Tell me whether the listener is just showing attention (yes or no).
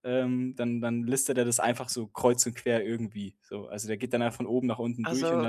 yes